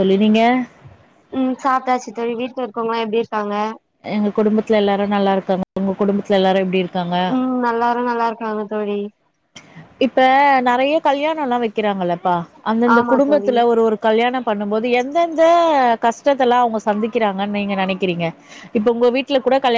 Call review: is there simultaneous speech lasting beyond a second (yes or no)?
no